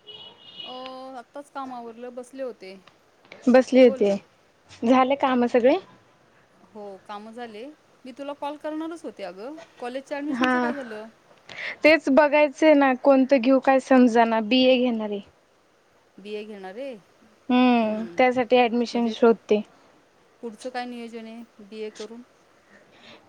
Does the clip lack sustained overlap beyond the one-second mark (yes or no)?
yes